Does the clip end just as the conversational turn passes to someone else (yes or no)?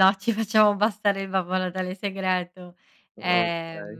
no